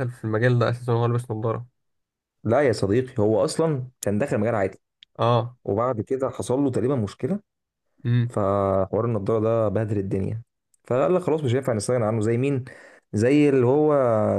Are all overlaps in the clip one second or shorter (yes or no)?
yes